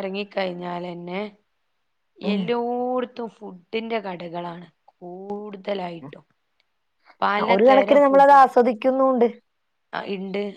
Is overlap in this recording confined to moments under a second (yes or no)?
yes